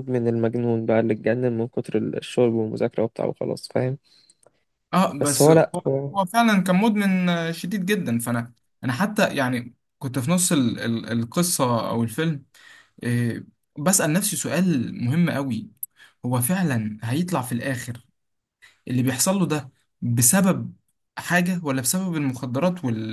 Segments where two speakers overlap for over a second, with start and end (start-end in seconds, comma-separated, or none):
none